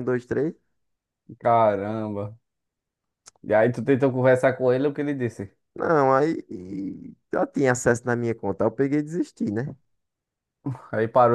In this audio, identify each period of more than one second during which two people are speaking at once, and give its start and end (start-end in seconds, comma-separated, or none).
none